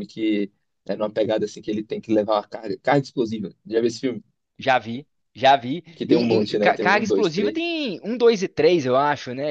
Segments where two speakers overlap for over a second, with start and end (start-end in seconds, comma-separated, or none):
6.0-7.6